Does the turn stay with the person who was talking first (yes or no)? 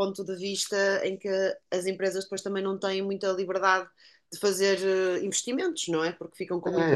no